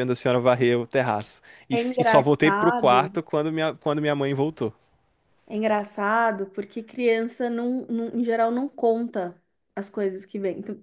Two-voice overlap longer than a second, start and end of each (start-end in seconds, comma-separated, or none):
1.7-3.1